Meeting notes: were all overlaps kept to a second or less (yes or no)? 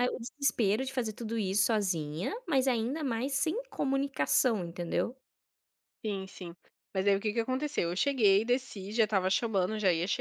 yes